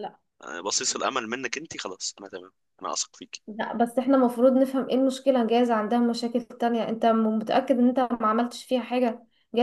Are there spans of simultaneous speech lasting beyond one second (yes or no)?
no